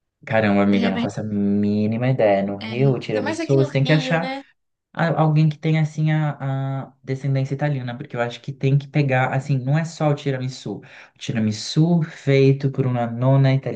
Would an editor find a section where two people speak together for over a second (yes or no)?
yes